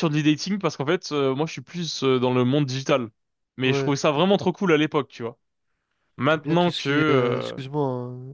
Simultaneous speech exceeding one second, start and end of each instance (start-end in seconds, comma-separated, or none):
6.3-7.6